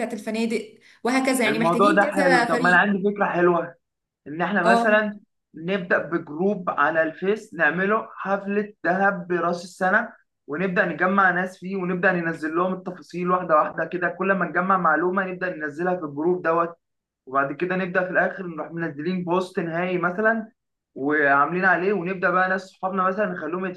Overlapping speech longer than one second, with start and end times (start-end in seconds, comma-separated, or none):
1.5-2.8